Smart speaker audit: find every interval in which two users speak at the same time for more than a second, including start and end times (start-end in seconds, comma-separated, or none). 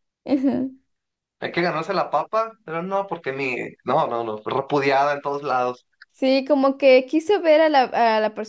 none